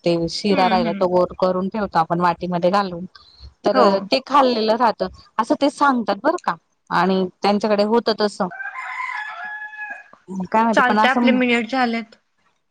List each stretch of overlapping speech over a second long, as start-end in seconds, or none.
none